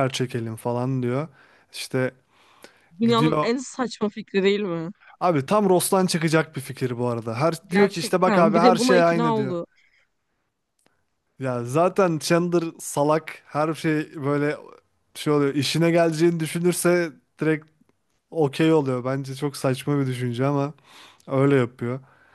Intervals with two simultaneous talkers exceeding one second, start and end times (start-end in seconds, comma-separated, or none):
7.7-9.6